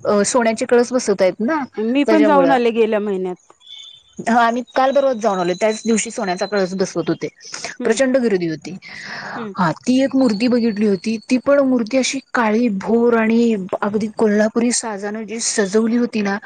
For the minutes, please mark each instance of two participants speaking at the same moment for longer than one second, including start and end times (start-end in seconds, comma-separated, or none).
none